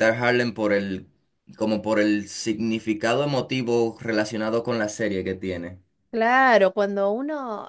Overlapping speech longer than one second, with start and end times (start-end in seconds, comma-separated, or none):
none